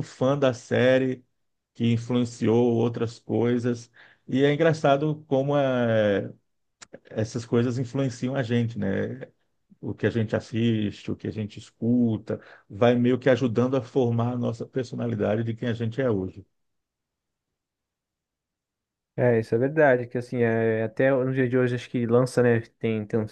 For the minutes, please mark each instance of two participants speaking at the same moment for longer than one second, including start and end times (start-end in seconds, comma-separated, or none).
none